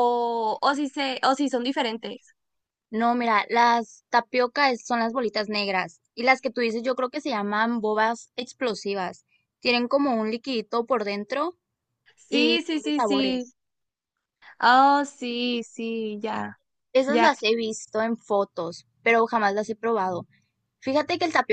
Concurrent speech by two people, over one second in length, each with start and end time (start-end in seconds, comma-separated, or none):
12.3-13.5